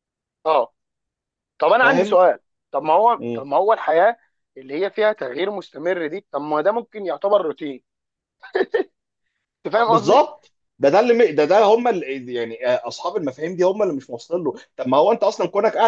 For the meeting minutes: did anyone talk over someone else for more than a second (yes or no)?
no